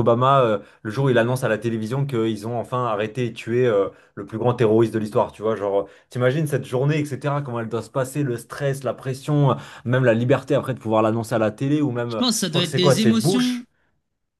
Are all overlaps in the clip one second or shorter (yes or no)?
no